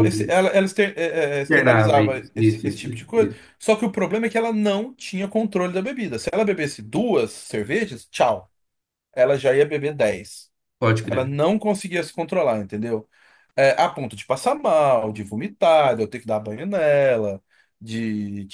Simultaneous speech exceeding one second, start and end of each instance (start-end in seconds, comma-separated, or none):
1.5-3.4